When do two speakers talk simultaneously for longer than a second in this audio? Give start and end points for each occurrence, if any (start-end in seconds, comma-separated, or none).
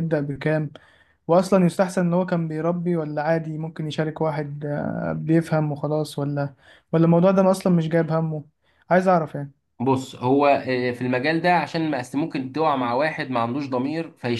none